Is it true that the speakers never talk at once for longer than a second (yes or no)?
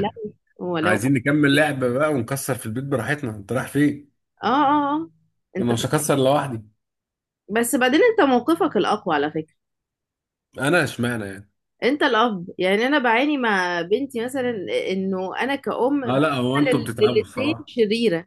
no